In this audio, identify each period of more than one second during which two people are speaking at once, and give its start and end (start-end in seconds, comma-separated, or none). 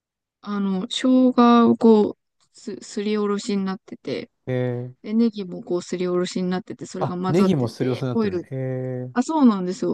7.0-8.5